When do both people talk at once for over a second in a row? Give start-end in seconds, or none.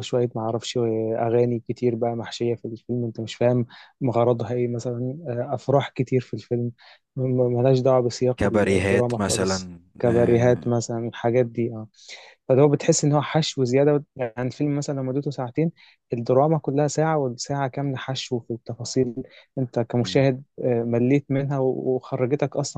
8.4-10.6